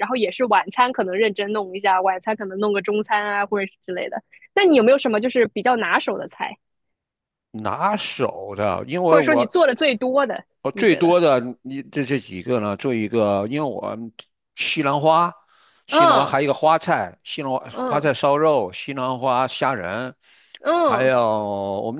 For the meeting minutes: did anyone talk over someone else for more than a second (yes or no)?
no